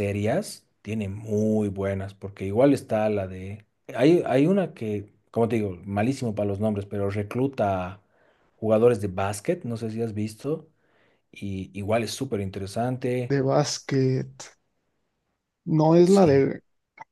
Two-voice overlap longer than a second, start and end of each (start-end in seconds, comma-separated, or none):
none